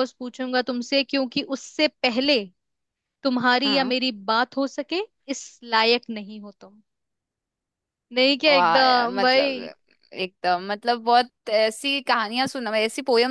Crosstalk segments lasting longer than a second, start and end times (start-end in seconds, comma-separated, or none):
8.5-9.7